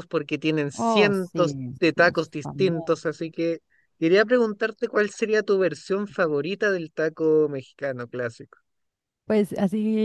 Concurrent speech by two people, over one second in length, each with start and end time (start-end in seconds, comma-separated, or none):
0.8-3.1